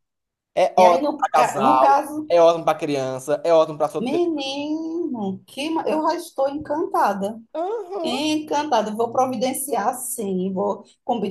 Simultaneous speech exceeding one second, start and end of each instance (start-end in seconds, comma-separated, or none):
0.8-2.3